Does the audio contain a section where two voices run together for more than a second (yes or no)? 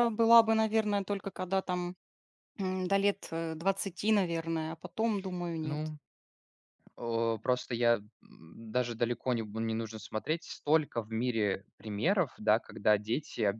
no